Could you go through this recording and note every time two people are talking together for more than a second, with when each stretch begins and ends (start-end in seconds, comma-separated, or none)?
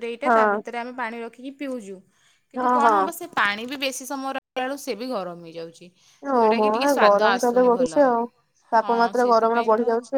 6.3-8.0